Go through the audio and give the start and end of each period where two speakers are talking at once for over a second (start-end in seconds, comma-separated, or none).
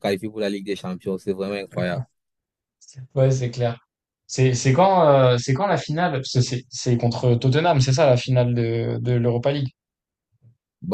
none